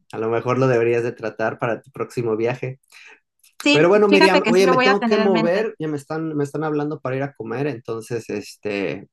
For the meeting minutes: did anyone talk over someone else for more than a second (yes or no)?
yes